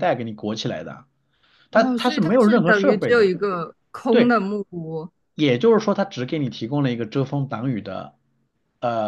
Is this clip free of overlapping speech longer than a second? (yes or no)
no